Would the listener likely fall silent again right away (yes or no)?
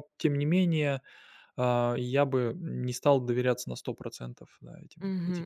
no